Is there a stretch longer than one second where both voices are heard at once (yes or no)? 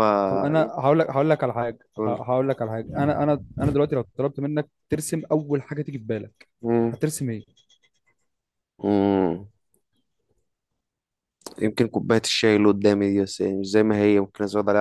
no